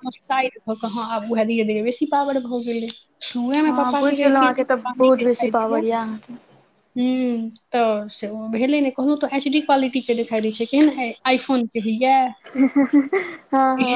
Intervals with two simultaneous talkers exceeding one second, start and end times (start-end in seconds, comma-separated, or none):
3.7-5.8